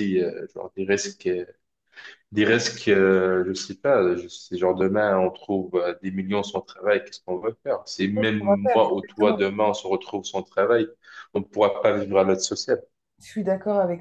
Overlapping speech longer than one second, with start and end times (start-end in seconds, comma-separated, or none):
8.0-9.4